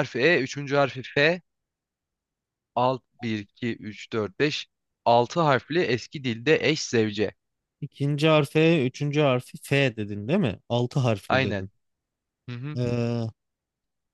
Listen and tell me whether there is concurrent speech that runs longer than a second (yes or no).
no